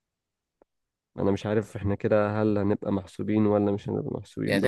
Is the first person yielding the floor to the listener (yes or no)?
yes